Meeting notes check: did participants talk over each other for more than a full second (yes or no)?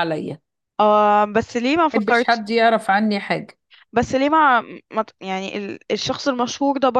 no